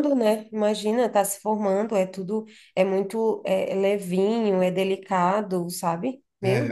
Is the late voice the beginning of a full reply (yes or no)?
yes